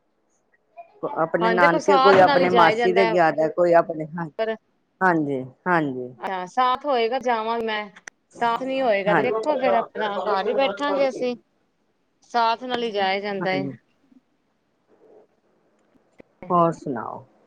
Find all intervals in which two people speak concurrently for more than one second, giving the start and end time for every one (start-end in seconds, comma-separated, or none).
1.4-3.1